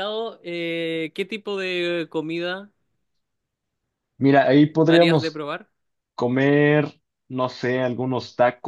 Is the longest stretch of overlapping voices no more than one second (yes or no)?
yes